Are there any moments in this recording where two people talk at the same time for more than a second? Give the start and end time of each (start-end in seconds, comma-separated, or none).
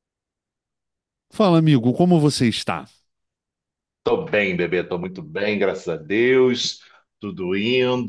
none